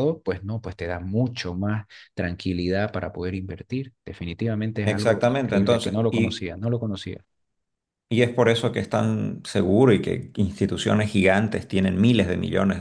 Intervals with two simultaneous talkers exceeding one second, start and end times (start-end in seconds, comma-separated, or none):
4.8-6.5